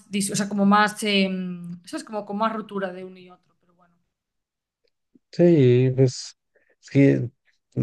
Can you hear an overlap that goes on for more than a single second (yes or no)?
no